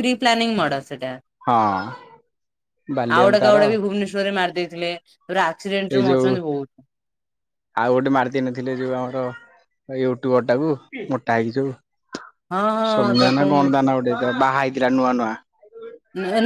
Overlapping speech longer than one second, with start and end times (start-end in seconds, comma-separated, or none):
none